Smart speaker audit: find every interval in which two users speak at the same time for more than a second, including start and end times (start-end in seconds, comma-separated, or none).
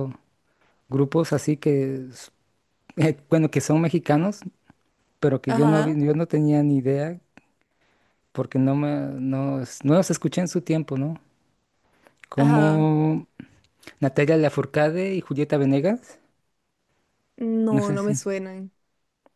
none